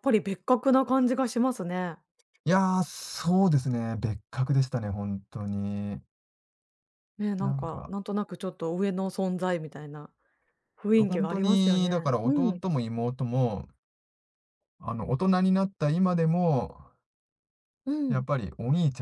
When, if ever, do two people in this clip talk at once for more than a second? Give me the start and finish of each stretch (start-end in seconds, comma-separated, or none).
10.9-12.6